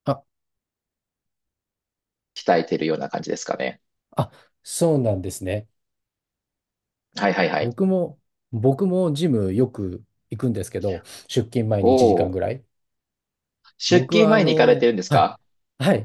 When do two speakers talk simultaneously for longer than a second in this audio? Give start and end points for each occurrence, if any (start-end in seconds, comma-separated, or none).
13.9-15.3